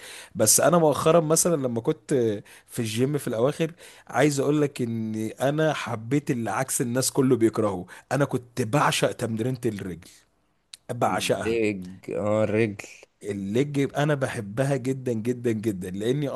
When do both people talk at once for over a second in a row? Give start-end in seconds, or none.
none